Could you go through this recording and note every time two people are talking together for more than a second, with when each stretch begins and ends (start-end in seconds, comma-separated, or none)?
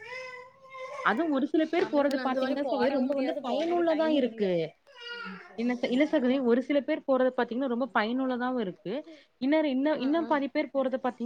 1.8-4.5